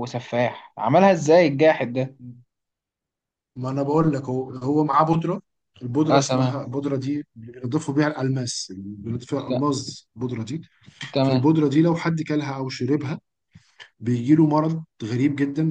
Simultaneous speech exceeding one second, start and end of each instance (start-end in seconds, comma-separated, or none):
none